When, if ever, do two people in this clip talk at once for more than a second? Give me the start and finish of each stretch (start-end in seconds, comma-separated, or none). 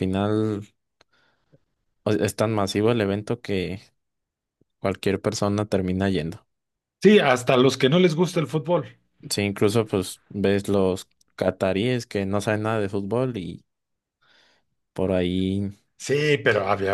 none